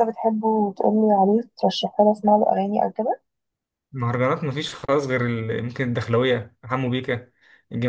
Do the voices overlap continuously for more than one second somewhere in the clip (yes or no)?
no